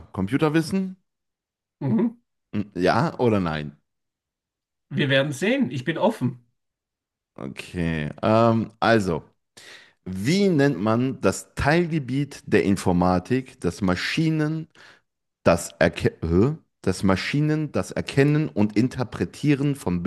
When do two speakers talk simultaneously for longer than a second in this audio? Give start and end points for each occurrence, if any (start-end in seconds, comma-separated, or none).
none